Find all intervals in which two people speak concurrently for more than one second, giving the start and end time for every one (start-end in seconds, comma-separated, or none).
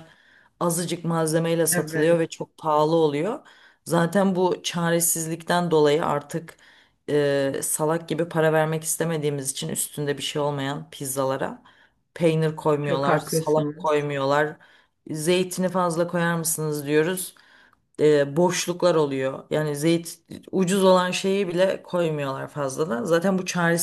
12.8-14.1